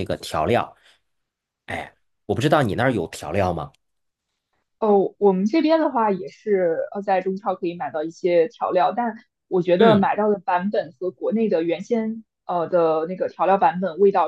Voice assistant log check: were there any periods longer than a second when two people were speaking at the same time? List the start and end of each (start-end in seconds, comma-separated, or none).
none